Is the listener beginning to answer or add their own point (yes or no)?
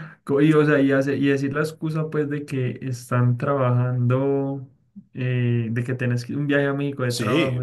yes